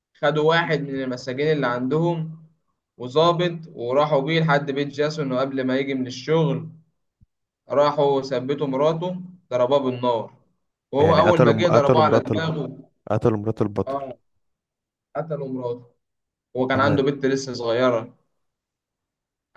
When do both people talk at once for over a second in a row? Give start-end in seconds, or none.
11.0-12.5